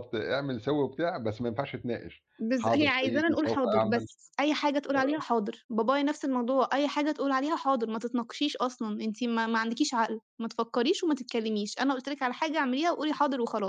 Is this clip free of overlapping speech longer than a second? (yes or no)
no